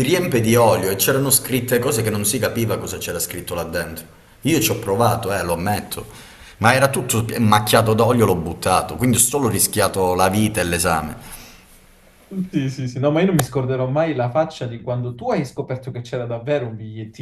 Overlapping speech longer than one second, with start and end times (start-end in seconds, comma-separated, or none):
none